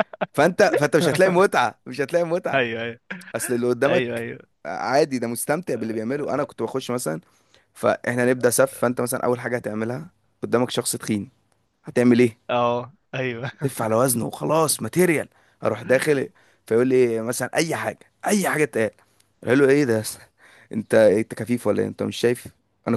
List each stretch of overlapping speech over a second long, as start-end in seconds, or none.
none